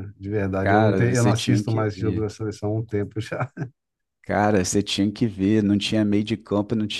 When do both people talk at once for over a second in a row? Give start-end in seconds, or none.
0.6-2.3